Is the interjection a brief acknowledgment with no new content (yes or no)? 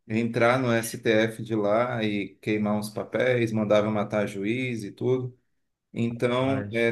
yes